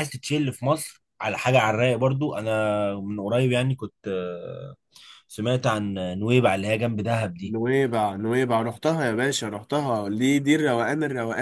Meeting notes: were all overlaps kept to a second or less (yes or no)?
yes